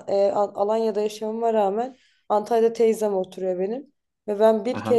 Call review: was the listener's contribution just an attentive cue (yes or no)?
yes